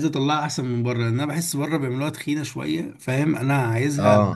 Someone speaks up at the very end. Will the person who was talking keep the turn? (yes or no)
yes